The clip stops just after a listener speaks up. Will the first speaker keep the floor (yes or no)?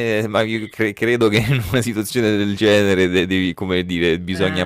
yes